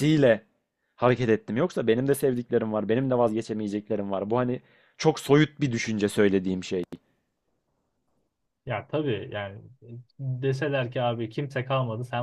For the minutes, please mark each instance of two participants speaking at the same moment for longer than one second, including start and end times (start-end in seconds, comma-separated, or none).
none